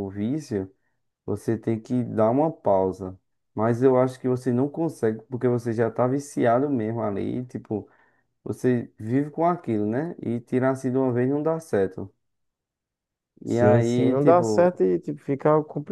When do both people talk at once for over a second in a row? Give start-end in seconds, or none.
13.4-14.8